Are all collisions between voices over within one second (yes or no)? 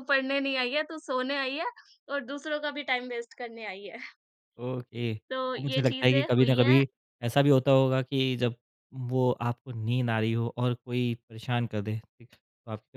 no